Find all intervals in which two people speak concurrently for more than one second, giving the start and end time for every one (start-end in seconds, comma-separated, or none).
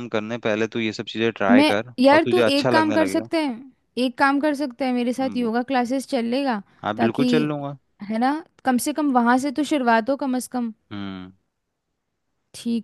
1.5-3.3